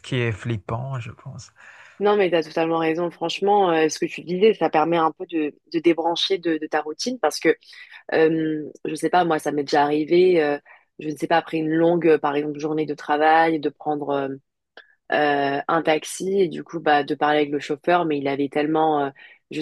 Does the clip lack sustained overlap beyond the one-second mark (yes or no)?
yes